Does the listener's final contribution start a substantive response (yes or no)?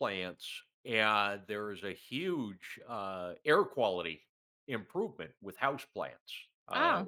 no